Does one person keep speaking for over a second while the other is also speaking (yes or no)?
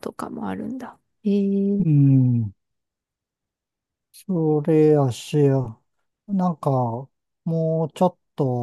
no